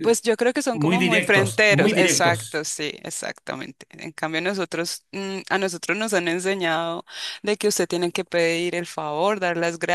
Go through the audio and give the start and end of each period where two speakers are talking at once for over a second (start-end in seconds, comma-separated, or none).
0.7-2.6